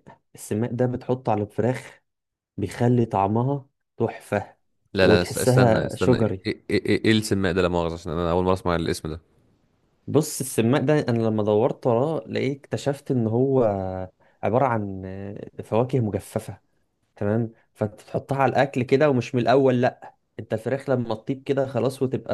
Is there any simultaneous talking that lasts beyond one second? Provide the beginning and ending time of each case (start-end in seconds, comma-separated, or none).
5.0-6.5